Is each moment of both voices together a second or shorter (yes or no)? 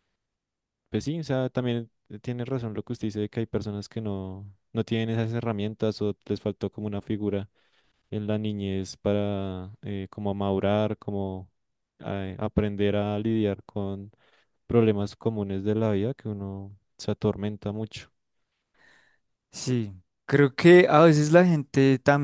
yes